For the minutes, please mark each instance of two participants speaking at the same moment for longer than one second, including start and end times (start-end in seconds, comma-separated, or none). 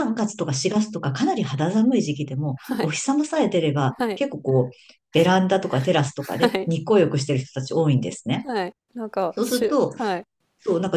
none